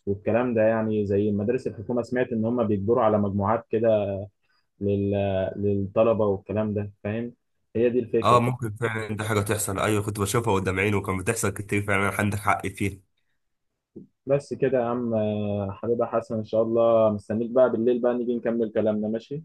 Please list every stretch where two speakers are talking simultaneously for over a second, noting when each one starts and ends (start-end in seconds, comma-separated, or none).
none